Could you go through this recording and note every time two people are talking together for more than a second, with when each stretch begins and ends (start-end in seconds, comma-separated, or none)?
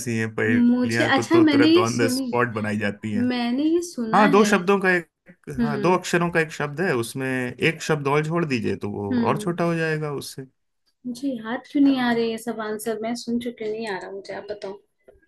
0.5-2.3